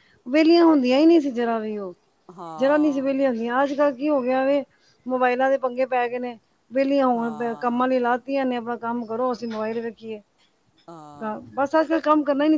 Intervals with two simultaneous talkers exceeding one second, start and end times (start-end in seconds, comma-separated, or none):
none